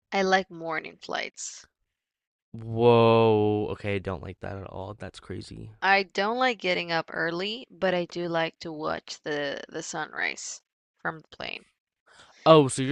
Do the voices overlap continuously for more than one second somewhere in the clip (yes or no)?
no